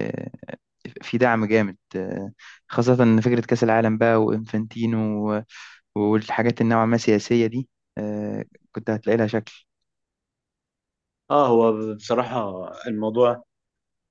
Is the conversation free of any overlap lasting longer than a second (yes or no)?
yes